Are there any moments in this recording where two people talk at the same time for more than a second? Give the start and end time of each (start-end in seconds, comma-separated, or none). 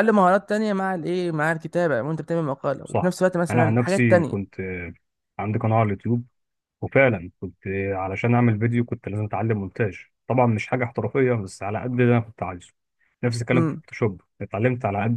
2.8-4.5